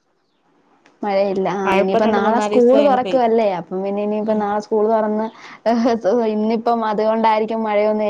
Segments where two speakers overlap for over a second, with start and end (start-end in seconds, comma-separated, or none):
1.6-3.5